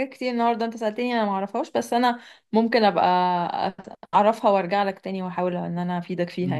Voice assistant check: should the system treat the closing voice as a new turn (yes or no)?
yes